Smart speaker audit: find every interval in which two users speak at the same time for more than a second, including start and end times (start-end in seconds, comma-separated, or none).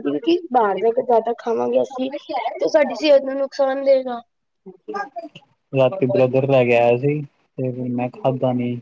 none